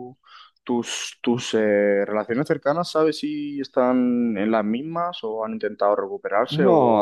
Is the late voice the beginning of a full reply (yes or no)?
yes